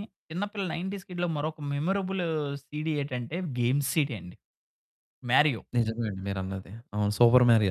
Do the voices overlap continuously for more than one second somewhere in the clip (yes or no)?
no